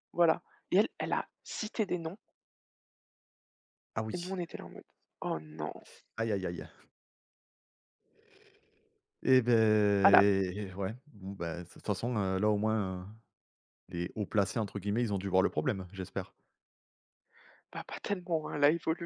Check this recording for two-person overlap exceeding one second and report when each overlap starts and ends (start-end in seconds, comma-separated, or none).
none